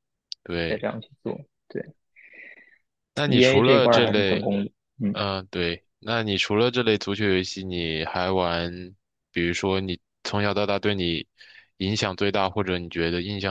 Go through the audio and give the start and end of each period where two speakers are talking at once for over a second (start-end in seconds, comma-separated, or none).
3.3-4.5